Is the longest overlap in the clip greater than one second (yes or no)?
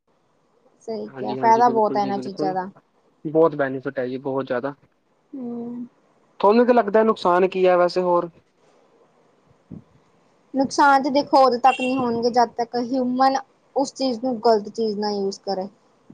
yes